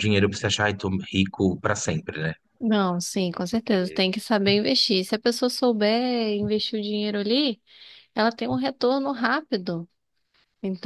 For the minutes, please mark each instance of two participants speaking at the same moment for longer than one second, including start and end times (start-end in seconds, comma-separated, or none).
none